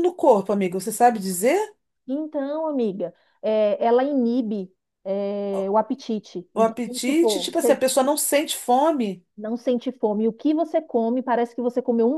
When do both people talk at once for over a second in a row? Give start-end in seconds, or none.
6.5-7.8